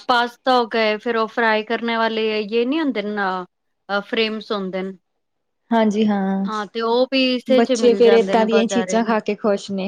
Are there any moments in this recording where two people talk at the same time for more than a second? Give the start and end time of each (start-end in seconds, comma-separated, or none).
7.6-9.0